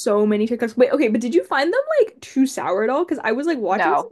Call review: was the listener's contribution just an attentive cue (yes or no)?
yes